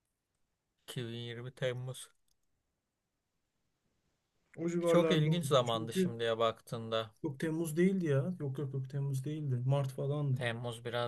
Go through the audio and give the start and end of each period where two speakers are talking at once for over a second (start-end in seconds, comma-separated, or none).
4.8-6.1